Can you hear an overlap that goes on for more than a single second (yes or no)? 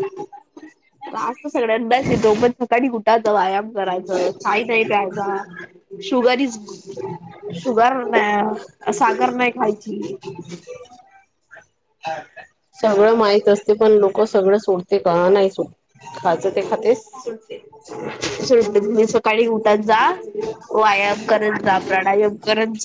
no